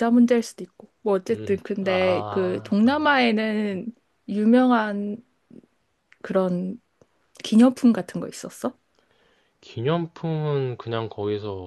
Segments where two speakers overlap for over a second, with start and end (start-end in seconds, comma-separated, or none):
1.3-3.1